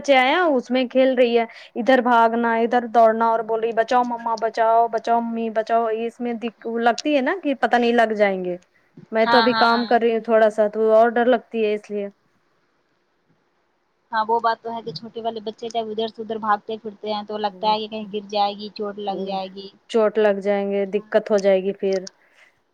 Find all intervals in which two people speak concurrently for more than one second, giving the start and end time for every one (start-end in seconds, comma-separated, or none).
none